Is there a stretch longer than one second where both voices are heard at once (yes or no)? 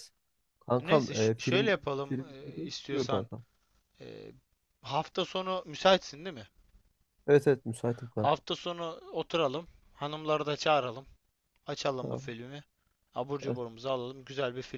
yes